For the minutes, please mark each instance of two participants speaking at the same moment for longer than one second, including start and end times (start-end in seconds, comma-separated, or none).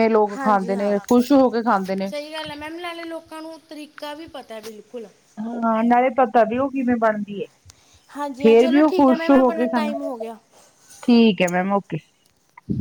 8.4-9.9